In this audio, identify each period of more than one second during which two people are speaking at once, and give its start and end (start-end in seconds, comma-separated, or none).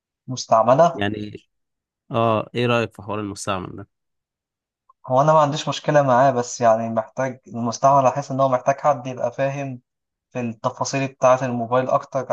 none